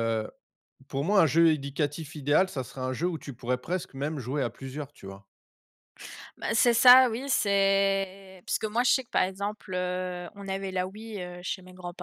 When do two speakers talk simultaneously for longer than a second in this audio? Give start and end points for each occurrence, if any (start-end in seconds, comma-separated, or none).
none